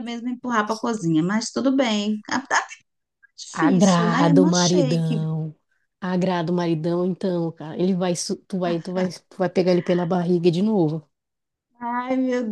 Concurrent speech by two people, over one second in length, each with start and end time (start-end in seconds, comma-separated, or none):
3.5-5.2